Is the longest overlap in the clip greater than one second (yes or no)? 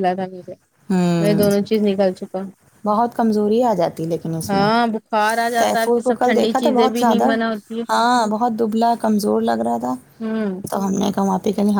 yes